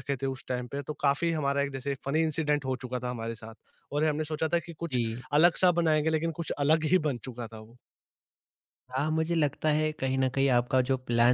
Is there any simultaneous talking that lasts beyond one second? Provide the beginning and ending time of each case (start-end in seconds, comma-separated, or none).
none